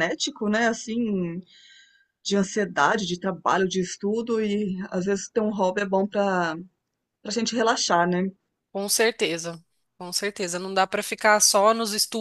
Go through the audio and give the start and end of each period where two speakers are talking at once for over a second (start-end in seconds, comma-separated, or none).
none